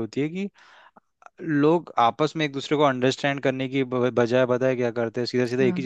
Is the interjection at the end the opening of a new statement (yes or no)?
no